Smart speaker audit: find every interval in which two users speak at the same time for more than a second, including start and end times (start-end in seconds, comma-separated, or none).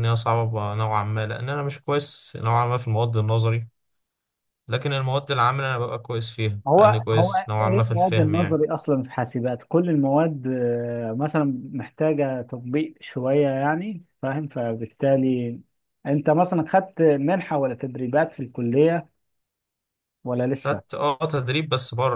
6.7-8.6